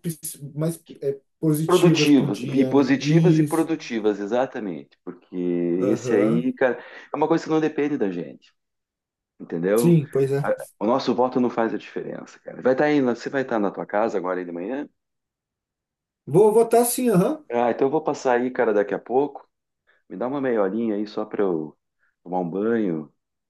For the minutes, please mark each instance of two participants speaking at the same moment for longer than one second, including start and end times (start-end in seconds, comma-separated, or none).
1.6-3.7